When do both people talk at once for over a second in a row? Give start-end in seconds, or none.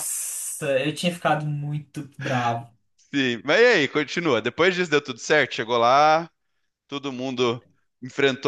none